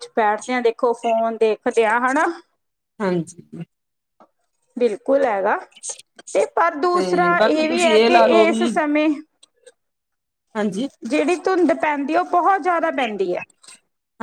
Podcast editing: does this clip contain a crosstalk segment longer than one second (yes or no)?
yes